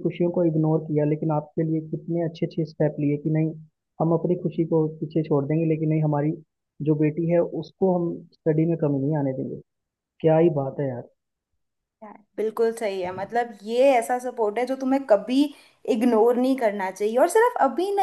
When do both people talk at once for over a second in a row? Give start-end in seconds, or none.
none